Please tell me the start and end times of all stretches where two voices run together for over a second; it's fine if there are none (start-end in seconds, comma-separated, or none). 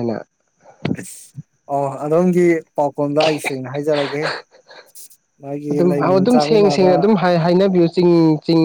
5.7-6.9